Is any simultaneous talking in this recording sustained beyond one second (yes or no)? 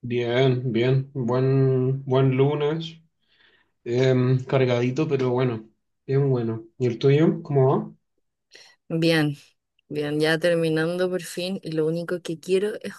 no